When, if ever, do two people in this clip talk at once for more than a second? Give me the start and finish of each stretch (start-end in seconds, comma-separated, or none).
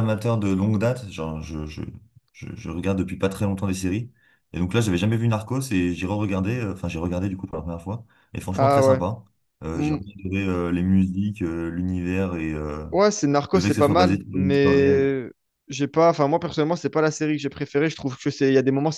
13.5-15.1